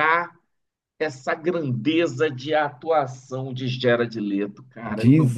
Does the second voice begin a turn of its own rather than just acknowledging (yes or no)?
yes